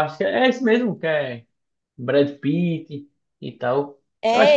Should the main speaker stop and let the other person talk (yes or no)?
yes